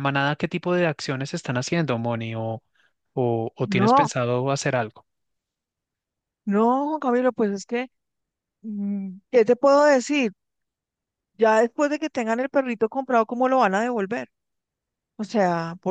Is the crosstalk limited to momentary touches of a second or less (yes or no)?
yes